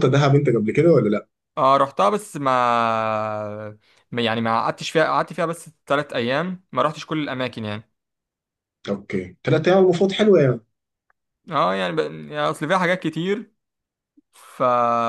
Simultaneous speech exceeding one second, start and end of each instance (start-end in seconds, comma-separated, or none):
none